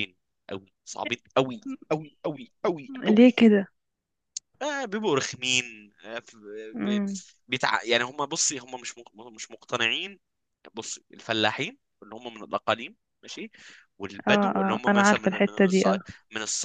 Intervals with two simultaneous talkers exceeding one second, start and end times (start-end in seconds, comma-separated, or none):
14.3-16.0